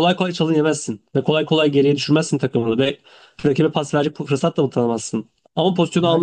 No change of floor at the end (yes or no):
yes